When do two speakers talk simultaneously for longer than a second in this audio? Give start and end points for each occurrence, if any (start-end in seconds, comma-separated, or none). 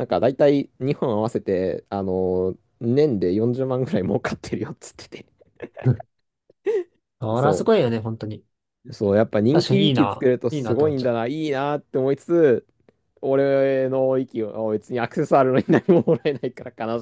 9.5-11.2